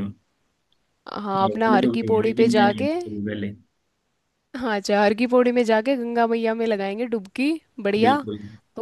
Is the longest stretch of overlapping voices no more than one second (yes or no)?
no